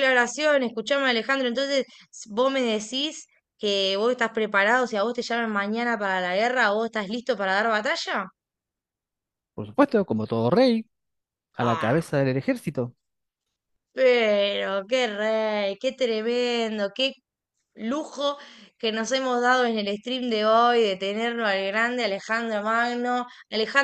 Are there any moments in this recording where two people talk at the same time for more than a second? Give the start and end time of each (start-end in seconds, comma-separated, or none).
none